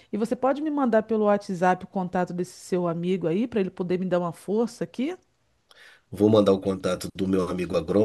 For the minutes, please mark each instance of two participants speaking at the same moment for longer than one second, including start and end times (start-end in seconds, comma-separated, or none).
none